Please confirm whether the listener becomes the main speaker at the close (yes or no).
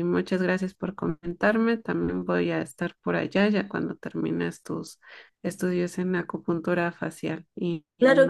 yes